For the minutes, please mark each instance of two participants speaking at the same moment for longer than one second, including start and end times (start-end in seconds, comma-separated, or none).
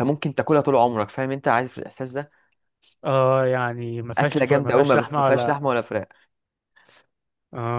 4.2-5.6